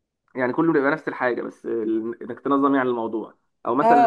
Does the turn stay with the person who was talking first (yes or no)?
no